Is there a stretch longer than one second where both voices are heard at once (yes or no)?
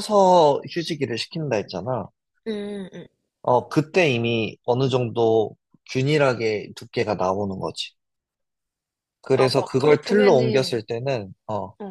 yes